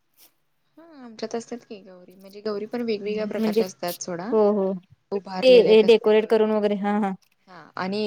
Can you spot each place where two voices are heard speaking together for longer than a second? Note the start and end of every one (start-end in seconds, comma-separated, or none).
5.2-6.4